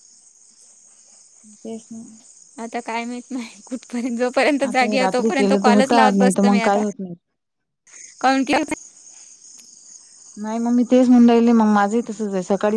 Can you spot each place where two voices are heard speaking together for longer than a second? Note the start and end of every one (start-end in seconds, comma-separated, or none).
4.7-6.8